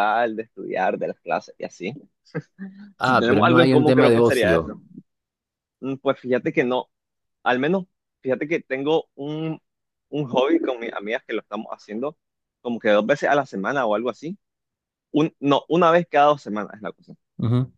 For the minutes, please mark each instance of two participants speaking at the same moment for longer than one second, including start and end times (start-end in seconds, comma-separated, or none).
3.0-4.7